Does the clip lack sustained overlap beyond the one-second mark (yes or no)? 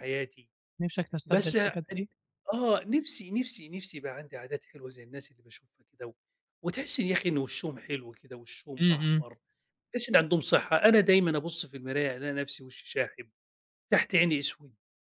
yes